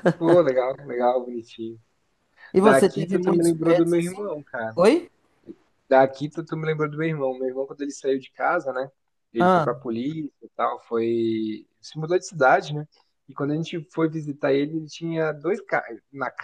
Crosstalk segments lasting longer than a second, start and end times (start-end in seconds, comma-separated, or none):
2.5-4.3